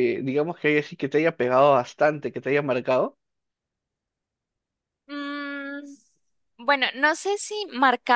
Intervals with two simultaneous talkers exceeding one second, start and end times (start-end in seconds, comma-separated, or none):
none